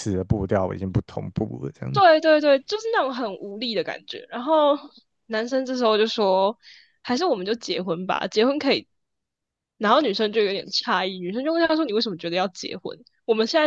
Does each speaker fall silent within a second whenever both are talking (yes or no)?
yes